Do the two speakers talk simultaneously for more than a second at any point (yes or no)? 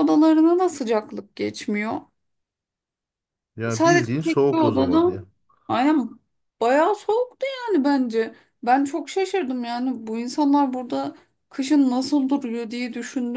yes